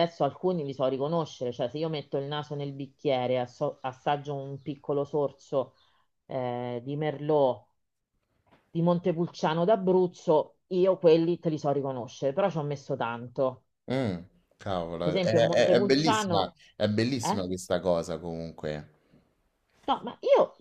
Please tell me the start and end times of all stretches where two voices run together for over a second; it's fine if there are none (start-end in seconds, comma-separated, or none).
15.0-16.6